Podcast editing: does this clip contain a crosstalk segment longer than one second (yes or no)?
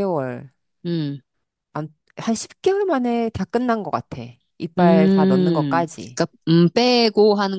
yes